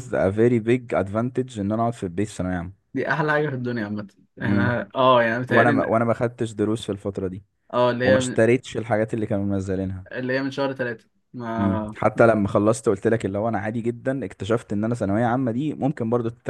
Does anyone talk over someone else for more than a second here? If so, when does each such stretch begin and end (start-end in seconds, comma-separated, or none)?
none